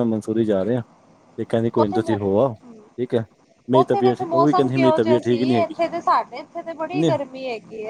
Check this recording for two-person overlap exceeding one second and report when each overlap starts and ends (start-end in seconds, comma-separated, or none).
3.8-5.7